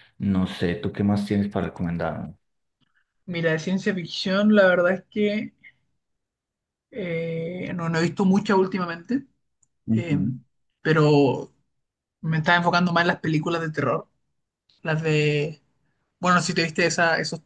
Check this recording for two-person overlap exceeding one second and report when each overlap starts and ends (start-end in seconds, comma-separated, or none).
none